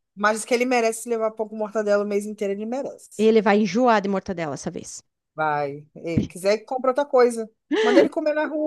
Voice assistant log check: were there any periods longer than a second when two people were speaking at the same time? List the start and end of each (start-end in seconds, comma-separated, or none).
none